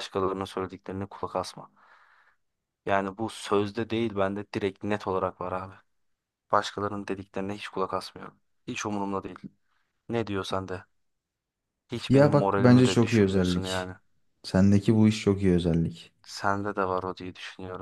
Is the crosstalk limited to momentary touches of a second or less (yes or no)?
no